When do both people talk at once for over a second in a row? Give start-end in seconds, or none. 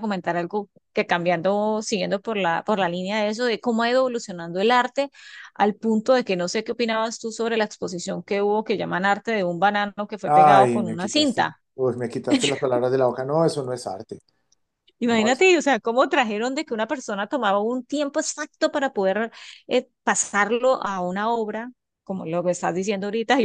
10.2-11.6